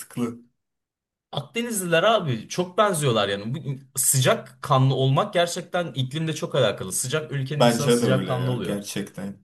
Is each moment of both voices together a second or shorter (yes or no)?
no